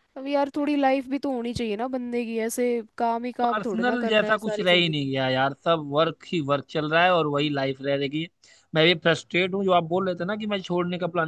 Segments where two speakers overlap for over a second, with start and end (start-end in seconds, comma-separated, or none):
3.4-5.1